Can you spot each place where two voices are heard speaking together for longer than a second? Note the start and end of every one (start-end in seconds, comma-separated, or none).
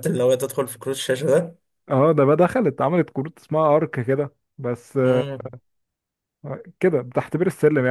none